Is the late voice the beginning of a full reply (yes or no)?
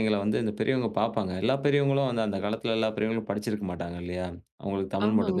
no